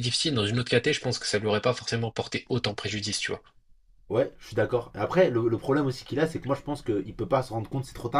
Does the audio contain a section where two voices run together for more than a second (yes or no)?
no